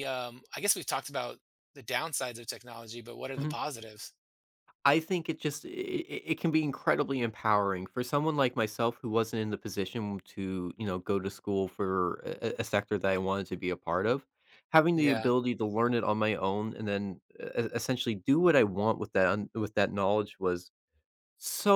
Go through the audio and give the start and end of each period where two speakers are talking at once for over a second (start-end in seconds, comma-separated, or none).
none